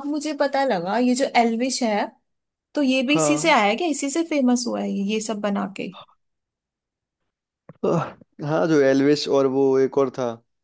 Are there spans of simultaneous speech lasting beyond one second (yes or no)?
no